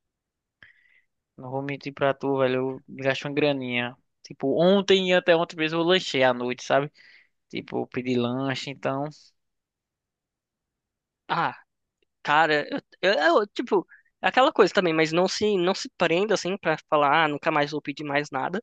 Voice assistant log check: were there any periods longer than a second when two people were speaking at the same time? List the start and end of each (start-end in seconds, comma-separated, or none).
none